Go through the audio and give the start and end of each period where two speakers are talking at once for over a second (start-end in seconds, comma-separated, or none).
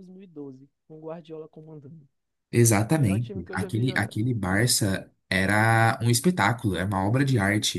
2.9-4.2